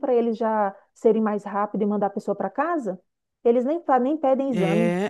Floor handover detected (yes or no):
yes